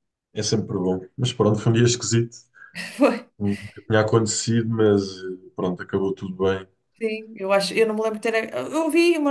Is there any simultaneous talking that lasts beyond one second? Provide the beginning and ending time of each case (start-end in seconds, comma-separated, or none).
none